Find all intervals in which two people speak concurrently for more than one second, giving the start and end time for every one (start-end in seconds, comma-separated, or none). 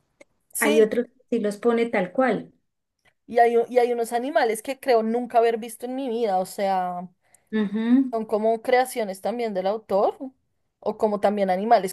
none